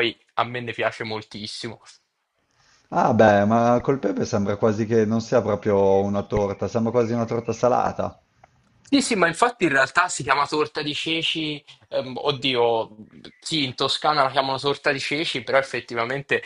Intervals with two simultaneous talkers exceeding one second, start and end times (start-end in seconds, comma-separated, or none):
none